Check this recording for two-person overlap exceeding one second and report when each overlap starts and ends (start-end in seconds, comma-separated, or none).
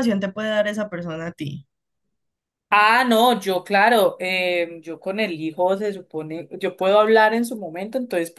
none